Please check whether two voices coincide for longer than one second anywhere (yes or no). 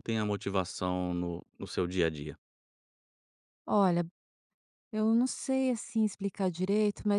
no